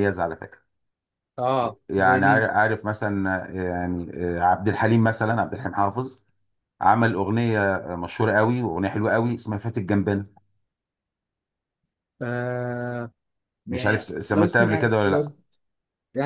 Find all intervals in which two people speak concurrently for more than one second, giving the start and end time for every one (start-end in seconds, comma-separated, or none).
13.7-15.2